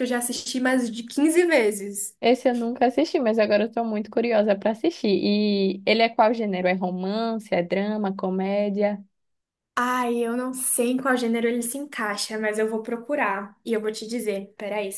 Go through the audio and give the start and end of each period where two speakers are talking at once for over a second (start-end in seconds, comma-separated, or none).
none